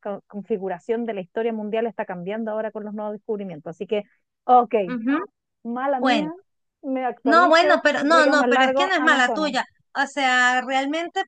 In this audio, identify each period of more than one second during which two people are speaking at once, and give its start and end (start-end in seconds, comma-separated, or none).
7.2-9.6